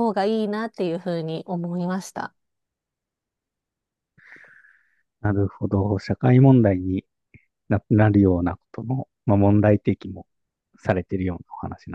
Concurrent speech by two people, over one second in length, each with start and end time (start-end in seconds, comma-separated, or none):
none